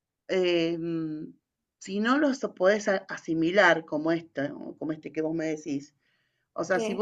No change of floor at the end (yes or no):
yes